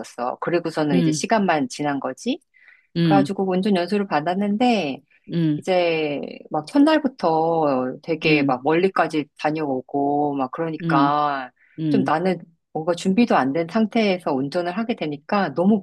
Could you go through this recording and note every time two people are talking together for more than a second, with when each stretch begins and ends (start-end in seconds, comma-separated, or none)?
none